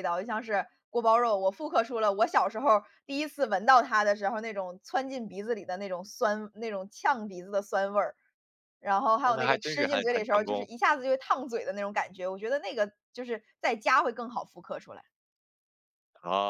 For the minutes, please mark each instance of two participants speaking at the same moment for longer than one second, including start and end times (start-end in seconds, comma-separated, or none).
9.2-10.7